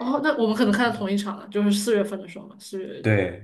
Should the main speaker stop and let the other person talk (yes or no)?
yes